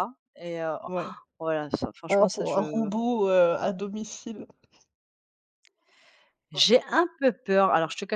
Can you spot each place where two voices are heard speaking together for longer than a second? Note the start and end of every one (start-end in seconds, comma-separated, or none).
none